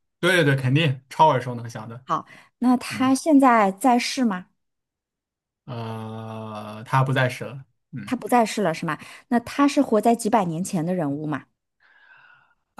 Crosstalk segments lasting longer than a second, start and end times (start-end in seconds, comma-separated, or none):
none